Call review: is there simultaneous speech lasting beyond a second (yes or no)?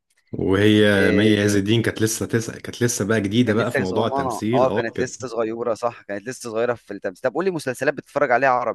yes